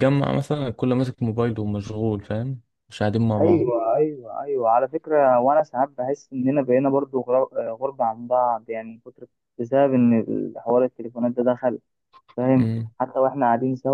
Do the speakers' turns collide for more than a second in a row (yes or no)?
no